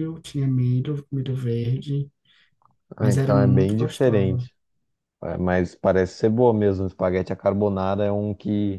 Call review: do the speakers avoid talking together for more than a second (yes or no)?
no